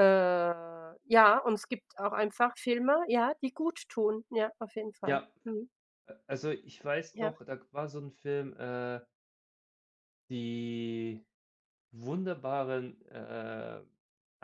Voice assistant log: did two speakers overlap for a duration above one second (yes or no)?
no